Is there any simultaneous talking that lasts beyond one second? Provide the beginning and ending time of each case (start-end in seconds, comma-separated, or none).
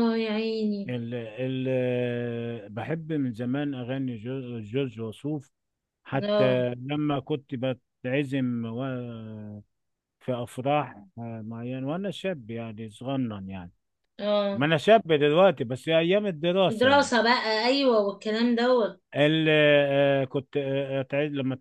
none